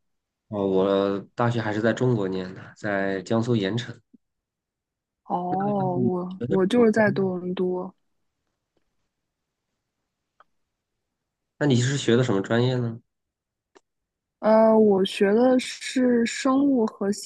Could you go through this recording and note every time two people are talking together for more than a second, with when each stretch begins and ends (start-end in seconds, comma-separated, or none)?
5.6-7.4